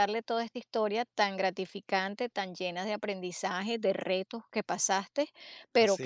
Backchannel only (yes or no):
yes